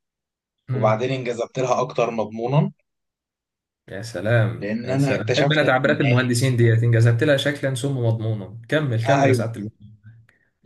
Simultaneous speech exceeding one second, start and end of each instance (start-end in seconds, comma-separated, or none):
4.5-5.7